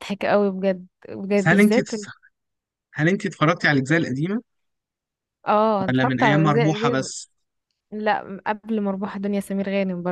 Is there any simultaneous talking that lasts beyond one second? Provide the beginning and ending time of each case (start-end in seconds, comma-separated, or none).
5.8-7.1